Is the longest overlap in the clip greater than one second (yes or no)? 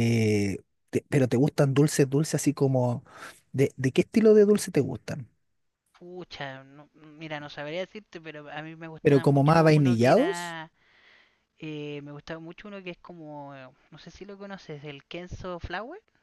yes